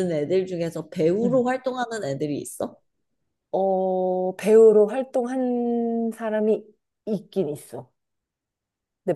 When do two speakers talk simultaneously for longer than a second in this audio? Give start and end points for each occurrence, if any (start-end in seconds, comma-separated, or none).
none